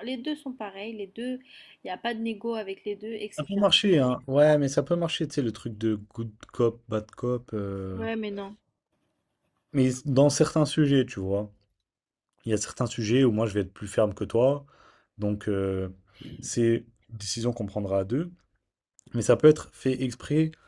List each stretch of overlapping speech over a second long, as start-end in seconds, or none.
none